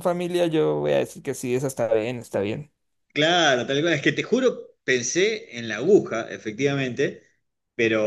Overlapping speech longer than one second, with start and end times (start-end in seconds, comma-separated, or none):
none